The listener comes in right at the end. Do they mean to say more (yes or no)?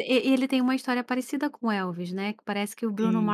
no